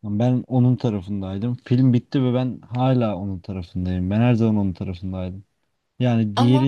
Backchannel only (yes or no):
yes